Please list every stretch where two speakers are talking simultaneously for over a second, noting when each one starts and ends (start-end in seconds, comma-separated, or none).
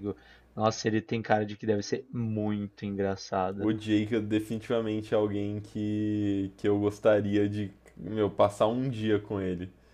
none